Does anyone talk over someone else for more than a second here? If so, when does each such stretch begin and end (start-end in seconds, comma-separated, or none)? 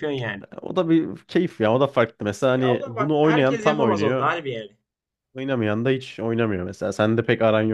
2.6-4.3